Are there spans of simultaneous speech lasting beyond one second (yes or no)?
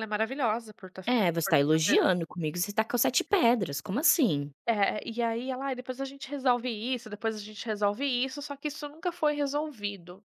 no